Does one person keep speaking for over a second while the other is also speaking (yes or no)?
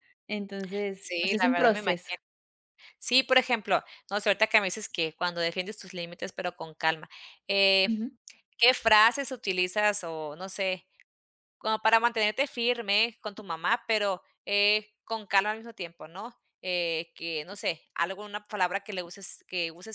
yes